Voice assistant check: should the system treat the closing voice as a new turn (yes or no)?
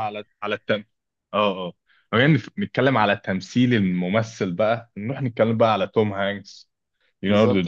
no